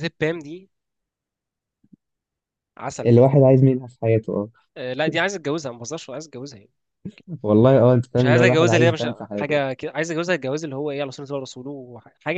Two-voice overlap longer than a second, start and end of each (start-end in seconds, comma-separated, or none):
8.2-9.6